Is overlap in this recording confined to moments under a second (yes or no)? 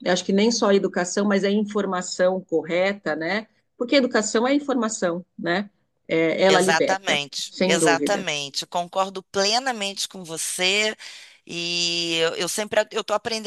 no